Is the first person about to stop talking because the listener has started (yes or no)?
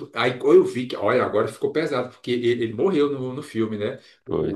no